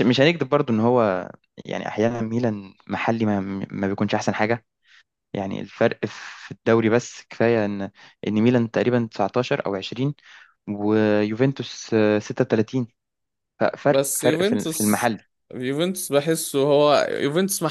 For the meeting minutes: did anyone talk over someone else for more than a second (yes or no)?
yes